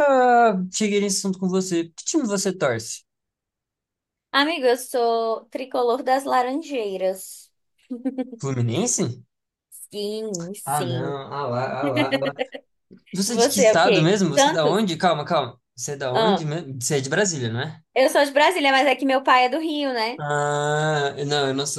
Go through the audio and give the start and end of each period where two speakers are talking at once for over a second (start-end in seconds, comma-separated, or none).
13.2-14.8